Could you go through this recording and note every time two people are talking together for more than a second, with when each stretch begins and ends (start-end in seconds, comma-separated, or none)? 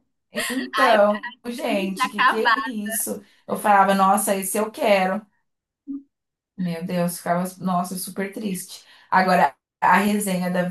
0.7-2.7